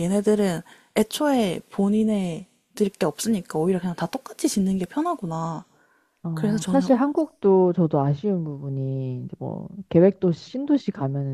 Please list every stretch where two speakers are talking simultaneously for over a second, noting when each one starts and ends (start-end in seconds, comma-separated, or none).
none